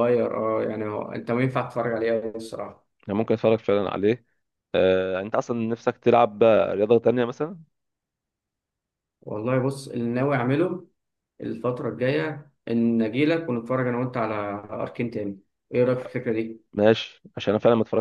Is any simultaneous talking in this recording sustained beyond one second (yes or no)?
no